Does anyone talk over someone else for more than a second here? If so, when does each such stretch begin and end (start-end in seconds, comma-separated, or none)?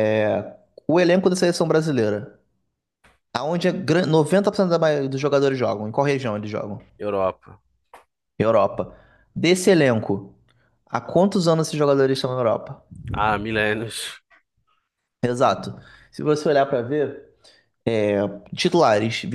none